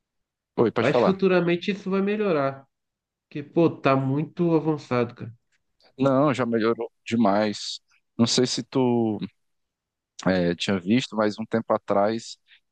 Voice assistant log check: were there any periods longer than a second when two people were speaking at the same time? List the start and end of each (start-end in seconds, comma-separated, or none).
none